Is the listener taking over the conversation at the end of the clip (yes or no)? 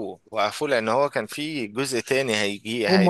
yes